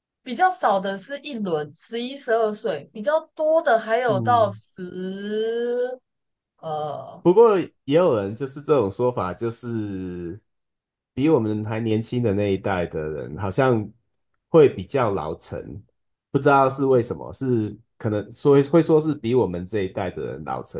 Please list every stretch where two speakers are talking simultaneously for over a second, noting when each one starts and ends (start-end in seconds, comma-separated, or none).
none